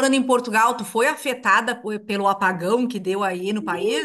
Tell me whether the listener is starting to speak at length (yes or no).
yes